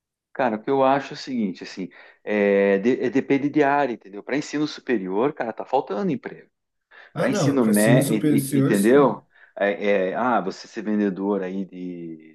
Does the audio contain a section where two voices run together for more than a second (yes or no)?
yes